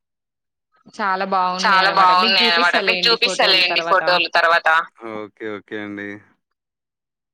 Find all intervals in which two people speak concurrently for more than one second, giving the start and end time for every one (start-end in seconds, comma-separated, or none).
1.6-4.0